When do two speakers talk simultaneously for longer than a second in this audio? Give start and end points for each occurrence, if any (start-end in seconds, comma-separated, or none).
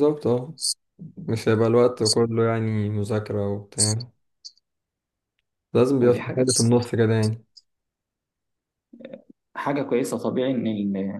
none